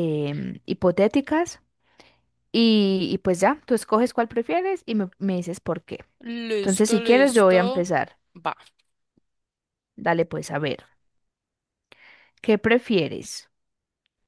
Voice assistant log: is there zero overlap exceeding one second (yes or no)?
no